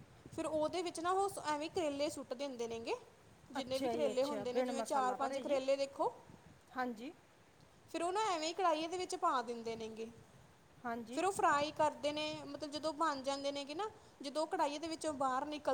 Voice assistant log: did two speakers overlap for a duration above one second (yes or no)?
yes